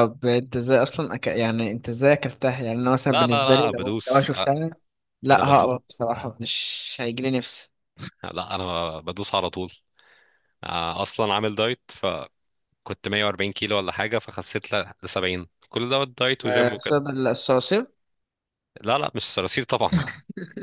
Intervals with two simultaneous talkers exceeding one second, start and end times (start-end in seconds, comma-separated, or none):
3.1-4.5